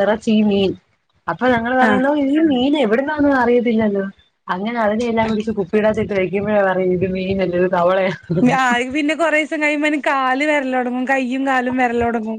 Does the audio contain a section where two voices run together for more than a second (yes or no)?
no